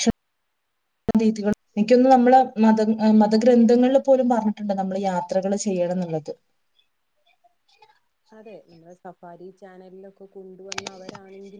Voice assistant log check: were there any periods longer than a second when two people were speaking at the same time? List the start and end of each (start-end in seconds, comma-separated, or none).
none